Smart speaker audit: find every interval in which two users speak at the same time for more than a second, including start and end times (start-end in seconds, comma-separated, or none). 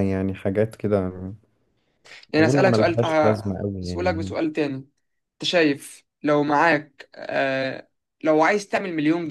2.4-4.4